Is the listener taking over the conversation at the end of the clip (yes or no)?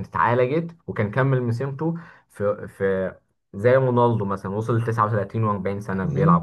yes